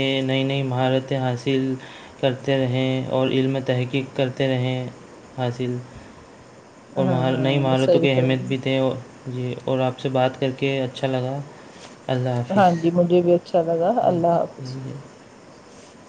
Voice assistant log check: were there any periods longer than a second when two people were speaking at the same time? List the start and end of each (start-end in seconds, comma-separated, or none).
7.0-8.6